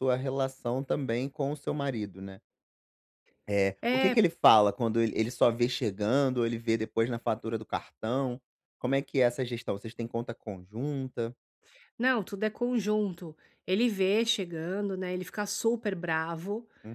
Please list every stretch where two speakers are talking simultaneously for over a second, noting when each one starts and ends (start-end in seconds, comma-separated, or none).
none